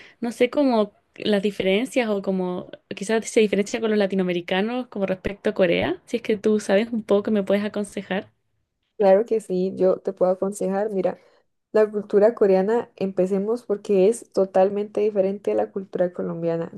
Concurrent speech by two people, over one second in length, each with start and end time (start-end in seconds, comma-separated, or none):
none